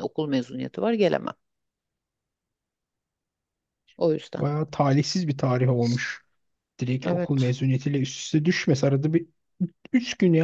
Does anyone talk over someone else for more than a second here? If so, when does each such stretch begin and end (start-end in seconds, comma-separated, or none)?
none